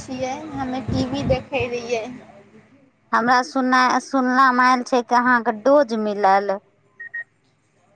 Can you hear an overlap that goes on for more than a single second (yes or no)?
no